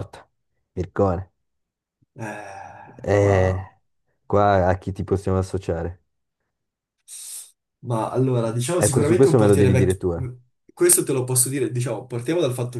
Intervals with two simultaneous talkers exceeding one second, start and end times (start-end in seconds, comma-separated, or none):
8.8-10.0